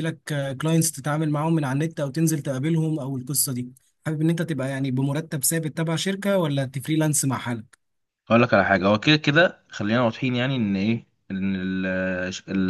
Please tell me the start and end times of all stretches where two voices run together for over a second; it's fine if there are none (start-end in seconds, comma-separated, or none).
none